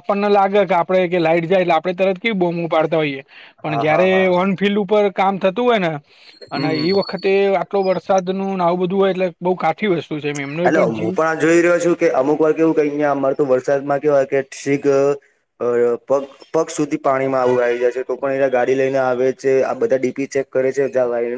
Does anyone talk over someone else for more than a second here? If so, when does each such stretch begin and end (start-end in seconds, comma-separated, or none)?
none